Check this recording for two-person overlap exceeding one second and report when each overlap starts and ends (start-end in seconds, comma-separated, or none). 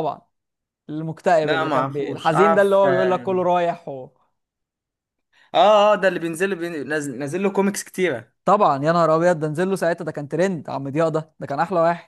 1.4-3.3